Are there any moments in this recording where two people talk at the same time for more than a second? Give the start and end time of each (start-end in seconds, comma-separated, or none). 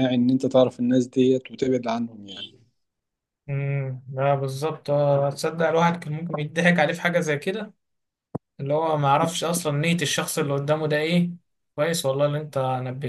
none